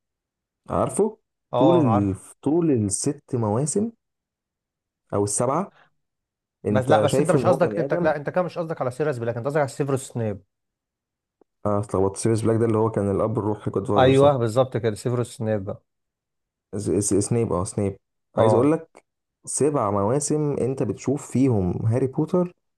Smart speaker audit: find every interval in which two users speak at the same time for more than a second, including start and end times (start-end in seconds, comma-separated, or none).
6.7-8.1